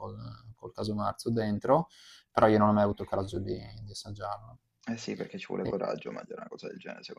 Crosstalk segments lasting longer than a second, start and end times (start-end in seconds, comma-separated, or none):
none